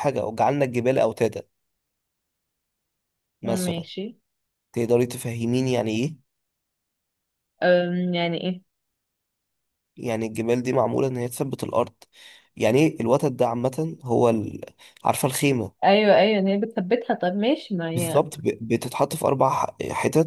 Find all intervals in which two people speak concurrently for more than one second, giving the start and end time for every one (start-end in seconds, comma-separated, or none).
none